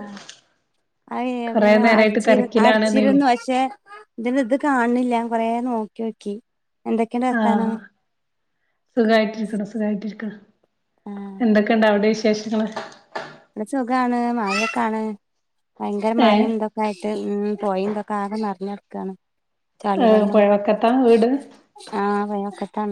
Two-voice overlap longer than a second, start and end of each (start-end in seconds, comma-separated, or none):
1.5-3.2